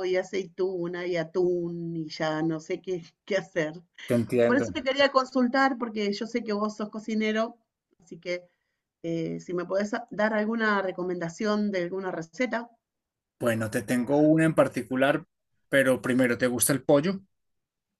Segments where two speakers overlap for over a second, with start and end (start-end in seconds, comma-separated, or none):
none